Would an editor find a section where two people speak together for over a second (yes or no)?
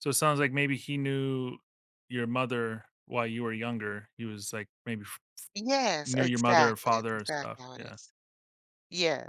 yes